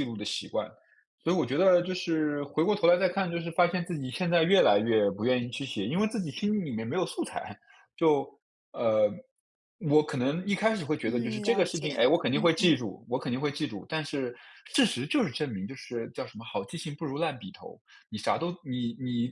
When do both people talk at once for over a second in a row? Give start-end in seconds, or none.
11.0-12.7